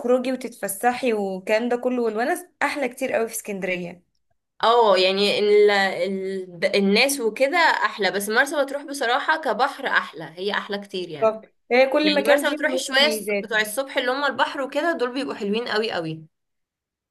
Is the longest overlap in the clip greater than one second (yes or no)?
yes